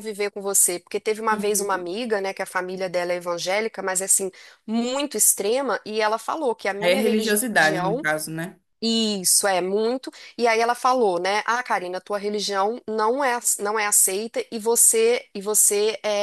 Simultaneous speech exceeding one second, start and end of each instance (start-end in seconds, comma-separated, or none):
6.8-8.0